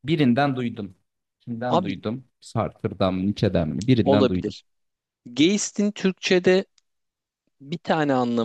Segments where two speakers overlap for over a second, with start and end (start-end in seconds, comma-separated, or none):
none